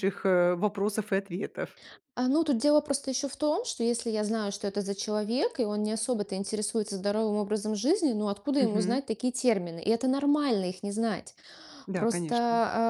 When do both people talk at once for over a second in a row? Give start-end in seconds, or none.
none